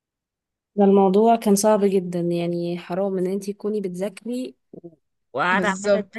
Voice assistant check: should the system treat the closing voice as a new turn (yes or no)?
no